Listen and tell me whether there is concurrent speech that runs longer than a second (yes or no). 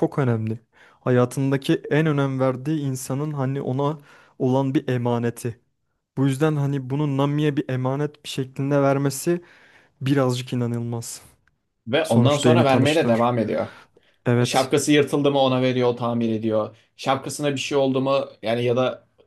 yes